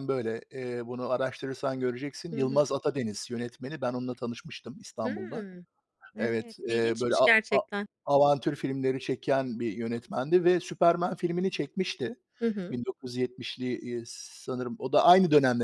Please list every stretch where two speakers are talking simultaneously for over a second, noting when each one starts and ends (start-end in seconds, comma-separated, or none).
6.2-7.6